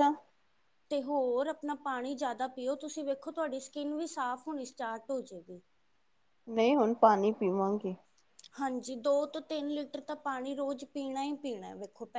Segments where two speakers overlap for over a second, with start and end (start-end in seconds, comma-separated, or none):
none